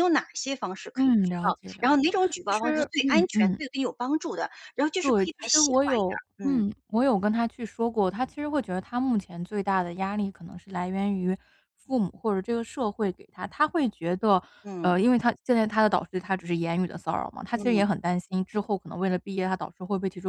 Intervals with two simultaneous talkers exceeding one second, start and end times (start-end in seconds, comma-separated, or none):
0.9-3.6, 5.0-6.6